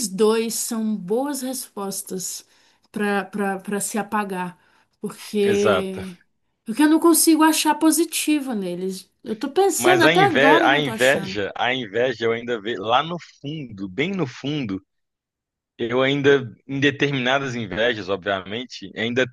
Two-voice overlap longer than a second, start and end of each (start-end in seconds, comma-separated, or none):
9.8-11.4